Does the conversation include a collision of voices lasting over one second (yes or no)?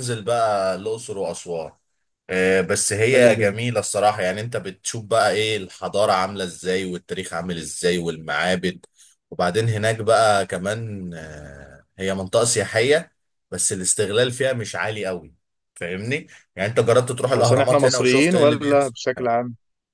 yes